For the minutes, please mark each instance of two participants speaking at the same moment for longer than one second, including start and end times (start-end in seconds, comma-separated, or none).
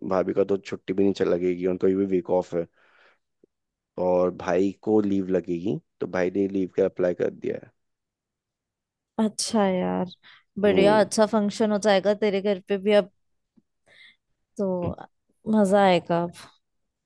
none